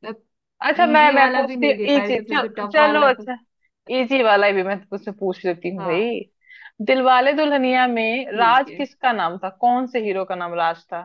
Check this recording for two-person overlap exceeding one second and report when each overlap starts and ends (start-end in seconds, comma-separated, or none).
0.8-3.3